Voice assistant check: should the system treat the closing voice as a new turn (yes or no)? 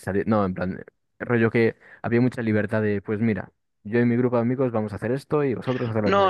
yes